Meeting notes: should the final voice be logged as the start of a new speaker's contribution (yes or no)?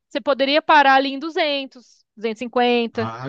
yes